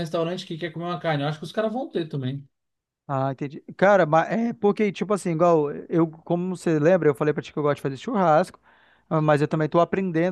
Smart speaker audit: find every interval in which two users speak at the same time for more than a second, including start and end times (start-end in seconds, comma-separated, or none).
none